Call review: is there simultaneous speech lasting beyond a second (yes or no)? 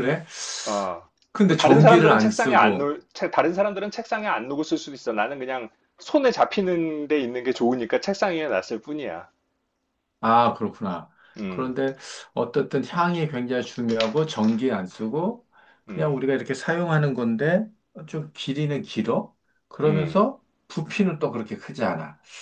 yes